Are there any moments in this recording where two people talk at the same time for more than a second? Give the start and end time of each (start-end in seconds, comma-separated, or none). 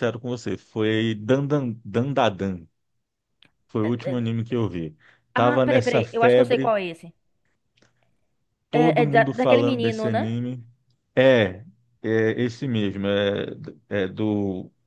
5.3-6.7, 8.7-10.4